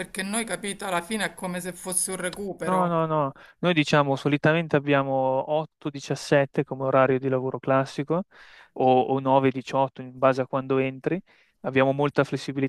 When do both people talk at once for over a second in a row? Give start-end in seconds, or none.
none